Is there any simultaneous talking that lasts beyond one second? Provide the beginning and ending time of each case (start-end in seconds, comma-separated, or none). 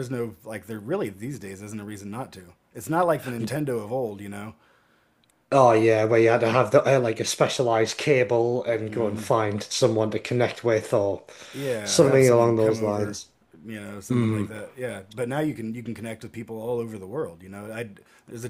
11.8-13.2